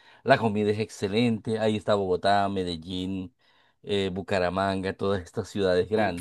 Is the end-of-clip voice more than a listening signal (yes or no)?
no